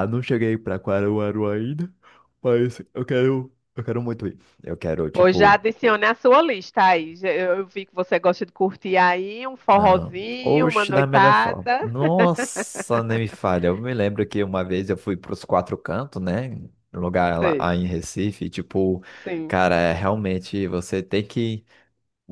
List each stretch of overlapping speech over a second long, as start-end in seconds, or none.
9.8-11.8